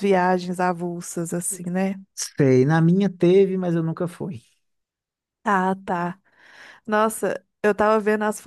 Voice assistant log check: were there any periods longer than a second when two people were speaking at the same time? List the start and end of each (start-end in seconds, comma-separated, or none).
none